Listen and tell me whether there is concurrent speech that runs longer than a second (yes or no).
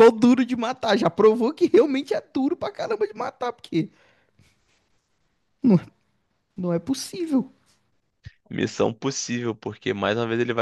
no